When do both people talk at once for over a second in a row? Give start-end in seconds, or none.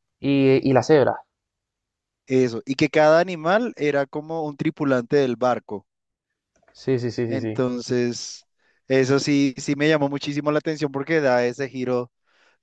none